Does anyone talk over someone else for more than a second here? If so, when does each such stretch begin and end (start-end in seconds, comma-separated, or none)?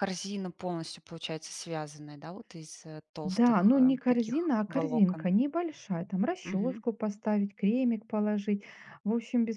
3.4-5.3